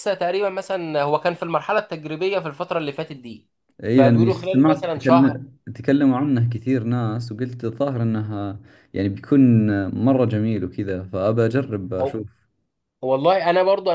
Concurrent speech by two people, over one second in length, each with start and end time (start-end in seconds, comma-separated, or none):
3.9-5.4